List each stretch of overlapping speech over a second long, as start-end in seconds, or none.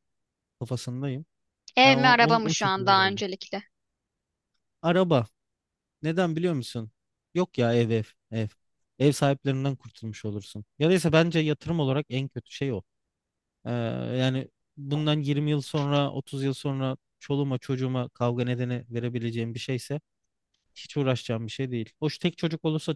1.9-3.2